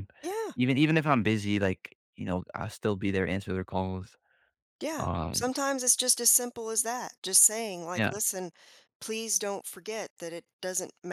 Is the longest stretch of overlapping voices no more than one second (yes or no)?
yes